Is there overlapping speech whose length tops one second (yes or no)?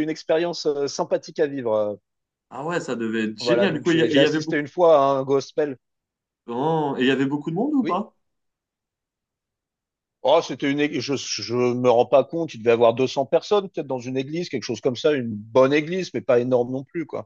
yes